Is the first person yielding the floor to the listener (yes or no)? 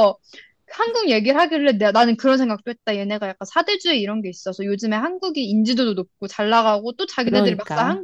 no